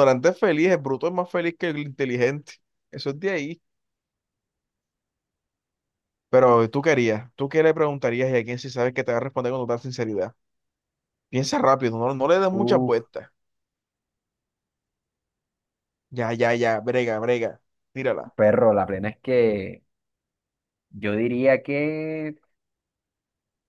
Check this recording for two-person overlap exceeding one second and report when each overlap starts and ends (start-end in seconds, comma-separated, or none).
none